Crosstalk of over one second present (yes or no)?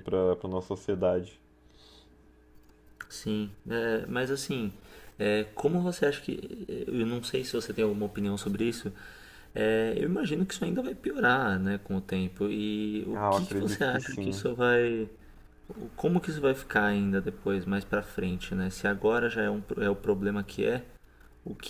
yes